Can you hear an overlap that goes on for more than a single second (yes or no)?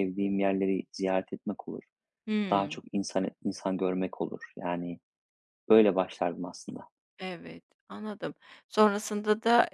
no